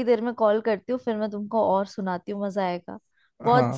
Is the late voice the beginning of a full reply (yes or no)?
yes